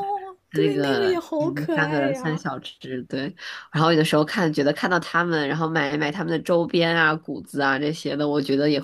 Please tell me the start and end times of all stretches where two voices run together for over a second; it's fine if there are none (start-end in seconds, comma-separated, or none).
0.5-2.4